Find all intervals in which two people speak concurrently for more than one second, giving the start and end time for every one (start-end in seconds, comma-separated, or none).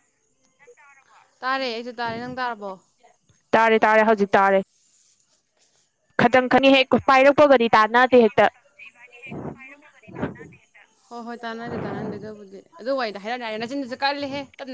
6.3-8.5